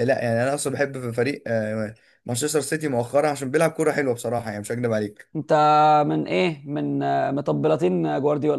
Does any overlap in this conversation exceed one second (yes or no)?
no